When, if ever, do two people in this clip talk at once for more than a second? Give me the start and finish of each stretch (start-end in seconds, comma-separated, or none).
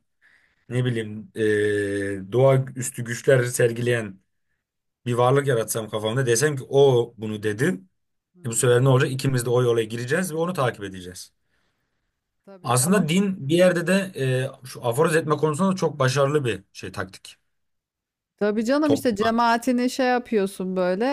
none